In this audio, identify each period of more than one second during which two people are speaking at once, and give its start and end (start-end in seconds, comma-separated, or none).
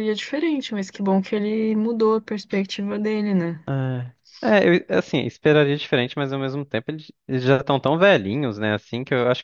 none